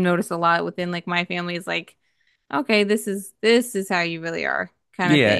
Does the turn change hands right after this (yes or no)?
yes